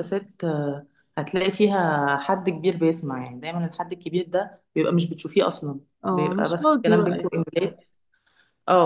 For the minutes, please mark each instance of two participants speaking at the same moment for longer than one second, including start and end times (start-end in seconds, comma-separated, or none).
6.0-7.7